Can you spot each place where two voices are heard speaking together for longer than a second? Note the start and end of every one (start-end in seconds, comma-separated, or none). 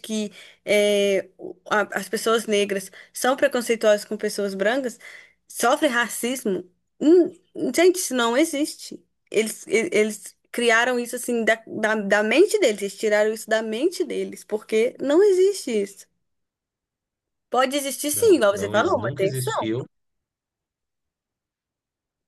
18.1-19.7